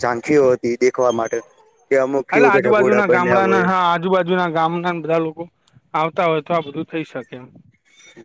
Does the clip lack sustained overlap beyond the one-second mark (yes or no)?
no